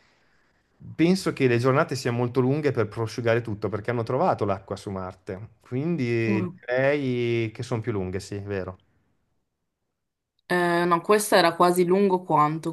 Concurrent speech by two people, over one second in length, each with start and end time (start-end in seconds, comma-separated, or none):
none